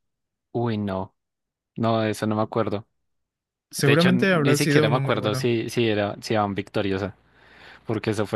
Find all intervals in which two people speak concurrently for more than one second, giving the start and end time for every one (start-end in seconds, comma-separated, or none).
3.8-5.5